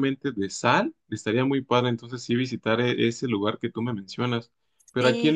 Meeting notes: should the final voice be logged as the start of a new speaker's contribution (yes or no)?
no